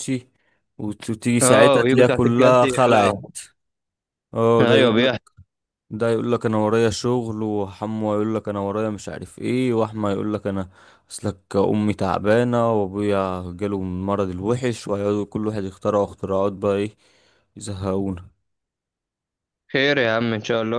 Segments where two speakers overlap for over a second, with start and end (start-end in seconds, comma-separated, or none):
1.4-3.2